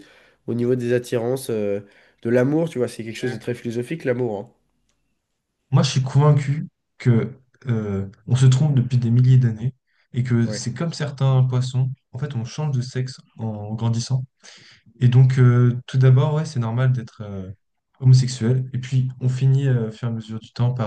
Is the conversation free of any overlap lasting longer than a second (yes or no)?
yes